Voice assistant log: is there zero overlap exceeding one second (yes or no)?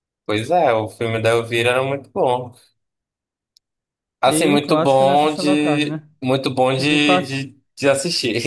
no